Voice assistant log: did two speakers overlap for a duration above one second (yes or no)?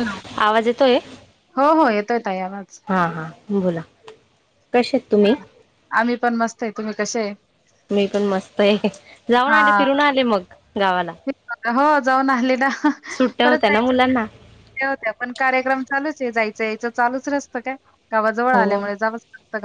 no